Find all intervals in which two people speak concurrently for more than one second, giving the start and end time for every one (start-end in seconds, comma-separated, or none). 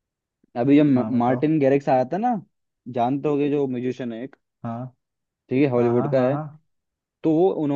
none